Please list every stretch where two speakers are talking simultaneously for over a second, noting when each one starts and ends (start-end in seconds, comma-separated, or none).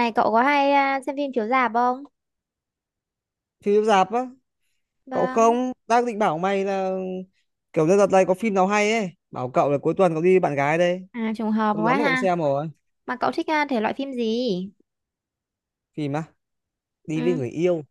none